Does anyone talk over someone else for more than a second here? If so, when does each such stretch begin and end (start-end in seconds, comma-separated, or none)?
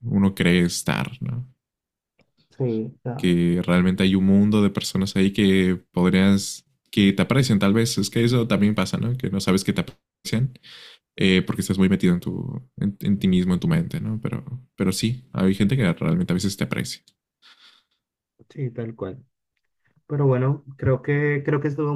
none